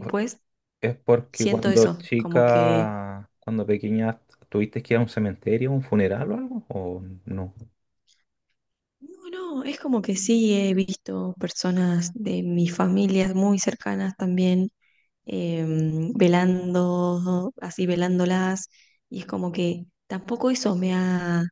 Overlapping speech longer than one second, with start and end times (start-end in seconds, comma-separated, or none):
1.3-2.9